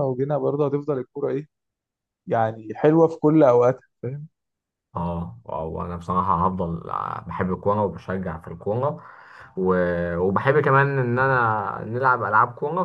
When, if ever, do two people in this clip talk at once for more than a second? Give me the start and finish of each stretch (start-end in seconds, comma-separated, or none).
none